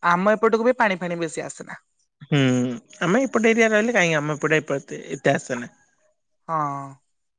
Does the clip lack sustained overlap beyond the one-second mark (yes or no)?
yes